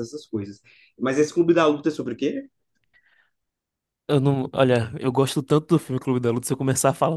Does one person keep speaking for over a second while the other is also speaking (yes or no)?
no